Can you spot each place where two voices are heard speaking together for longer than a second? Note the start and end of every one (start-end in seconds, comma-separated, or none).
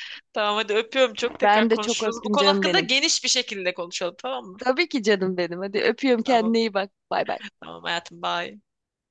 1.4-2.9